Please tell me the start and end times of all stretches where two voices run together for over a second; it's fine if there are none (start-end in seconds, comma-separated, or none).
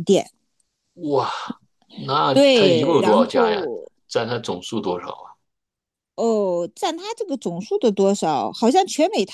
2.3-3.6